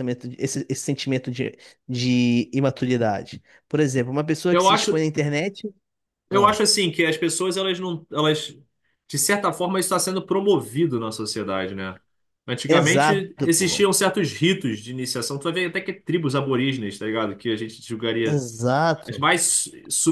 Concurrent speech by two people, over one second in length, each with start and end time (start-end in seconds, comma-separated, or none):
12.7-13.9